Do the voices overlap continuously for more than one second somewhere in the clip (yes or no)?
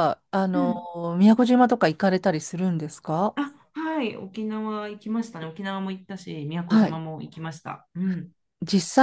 no